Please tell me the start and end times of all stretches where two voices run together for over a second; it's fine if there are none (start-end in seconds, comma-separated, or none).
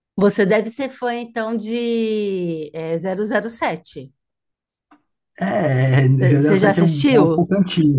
6.1-7.4